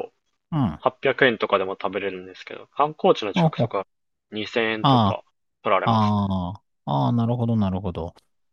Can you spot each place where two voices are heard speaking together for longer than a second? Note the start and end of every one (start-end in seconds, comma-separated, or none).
none